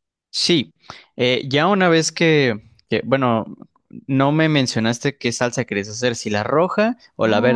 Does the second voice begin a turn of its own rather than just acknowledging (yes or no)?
yes